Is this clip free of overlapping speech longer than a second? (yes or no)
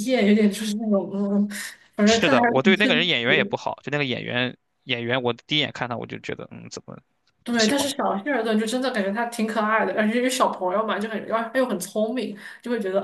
no